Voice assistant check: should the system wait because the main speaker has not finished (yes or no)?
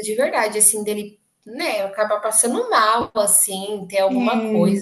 no